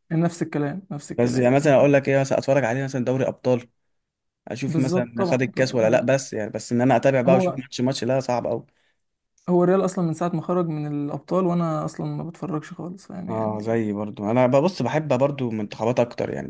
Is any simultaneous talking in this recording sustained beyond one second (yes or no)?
yes